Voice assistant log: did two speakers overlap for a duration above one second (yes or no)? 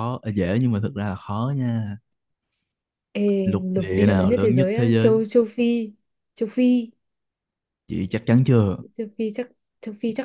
yes